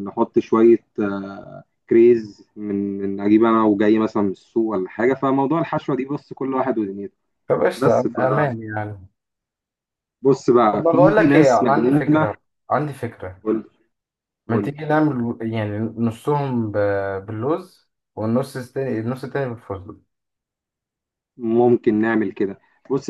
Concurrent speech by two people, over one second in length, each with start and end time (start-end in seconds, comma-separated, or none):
10.7-12.3